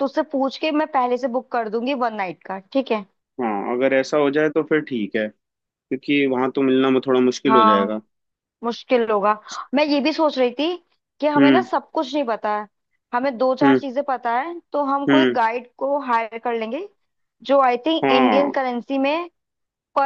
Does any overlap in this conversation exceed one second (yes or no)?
no